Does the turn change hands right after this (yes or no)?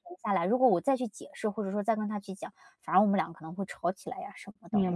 yes